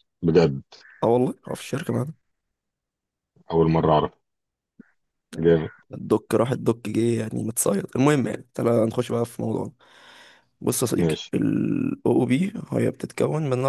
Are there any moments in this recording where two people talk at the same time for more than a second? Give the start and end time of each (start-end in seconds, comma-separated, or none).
none